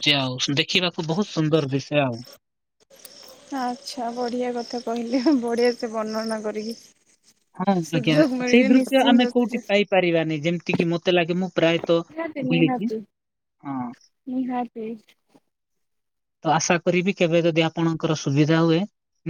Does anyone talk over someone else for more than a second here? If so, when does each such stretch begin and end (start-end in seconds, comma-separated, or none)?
7.9-9.7